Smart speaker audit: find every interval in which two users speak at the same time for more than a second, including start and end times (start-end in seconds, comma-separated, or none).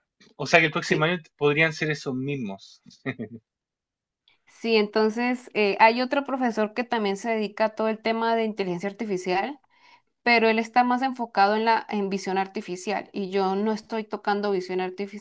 none